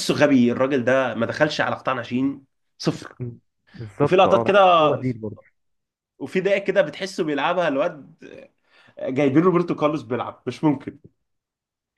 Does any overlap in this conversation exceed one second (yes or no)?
no